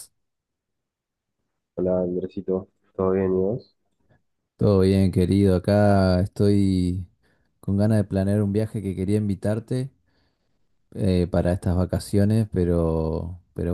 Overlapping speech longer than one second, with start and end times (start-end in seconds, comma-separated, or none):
none